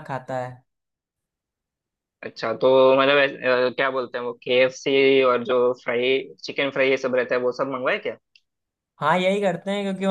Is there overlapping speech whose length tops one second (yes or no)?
no